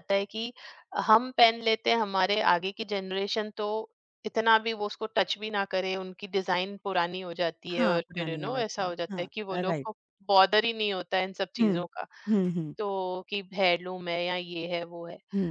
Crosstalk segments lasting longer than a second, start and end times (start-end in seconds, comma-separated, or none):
7.7-9.9